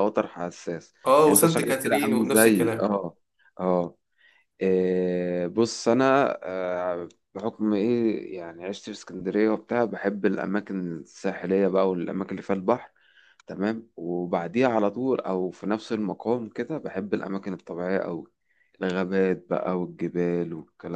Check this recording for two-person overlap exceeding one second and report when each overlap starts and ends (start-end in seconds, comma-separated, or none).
1.1-2.9